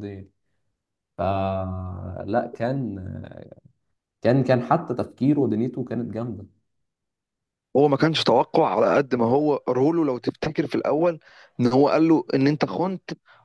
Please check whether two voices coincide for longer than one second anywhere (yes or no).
no